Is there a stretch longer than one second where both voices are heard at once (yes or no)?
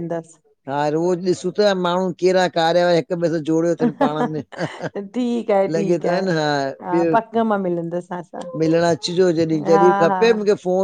yes